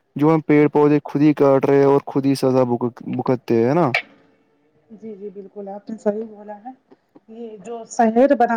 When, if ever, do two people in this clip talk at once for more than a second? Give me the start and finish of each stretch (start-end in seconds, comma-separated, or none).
none